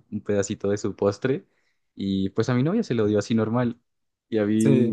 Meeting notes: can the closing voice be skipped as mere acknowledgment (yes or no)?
yes